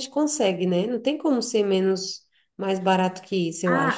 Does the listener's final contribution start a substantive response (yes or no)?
yes